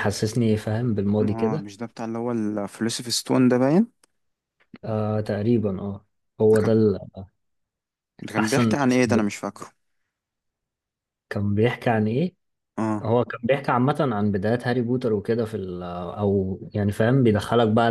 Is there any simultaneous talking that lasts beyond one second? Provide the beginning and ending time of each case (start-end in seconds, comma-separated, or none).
none